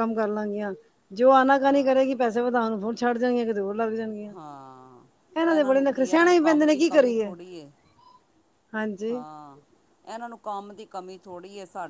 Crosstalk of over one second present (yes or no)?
yes